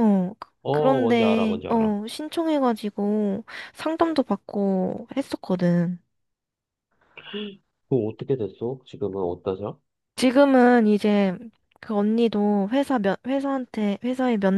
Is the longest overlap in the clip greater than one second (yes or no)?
yes